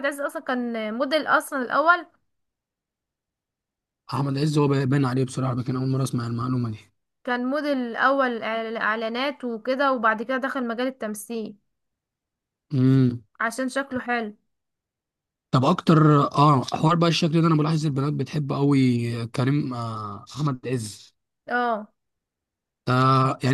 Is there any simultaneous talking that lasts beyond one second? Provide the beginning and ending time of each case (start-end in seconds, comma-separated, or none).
none